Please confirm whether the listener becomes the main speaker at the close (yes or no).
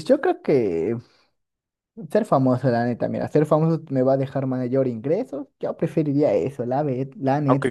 yes